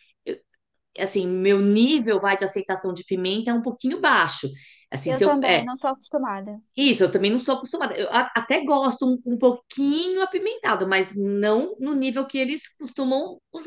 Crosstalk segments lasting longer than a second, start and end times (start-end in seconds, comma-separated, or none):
none